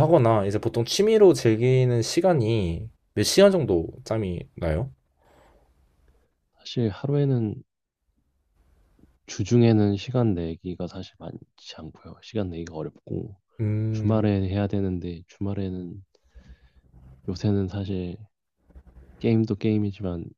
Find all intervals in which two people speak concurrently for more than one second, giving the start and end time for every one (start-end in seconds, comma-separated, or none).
none